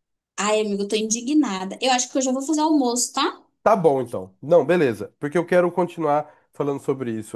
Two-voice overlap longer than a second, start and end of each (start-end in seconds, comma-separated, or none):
none